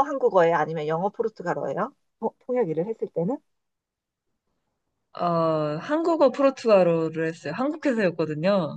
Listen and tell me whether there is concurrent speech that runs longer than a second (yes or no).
no